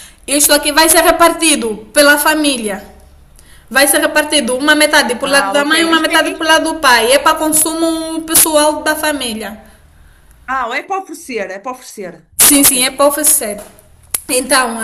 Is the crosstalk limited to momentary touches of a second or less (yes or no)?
no